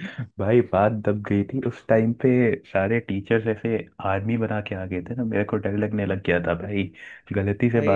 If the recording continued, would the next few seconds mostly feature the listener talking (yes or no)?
yes